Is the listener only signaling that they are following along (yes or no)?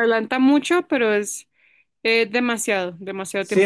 no